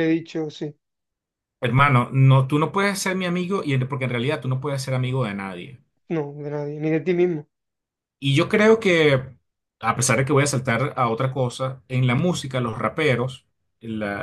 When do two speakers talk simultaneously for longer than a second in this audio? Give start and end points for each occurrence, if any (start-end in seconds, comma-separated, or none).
none